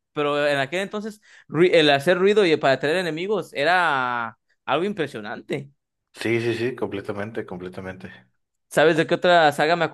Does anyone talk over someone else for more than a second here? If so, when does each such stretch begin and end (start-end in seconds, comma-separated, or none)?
none